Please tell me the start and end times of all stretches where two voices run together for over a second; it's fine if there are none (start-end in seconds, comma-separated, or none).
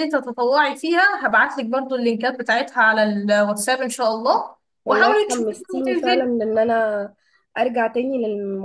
4.8-6.3